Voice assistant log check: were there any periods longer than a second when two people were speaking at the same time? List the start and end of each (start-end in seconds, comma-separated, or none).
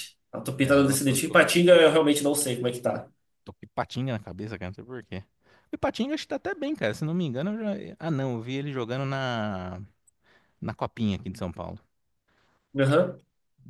0.6-1.8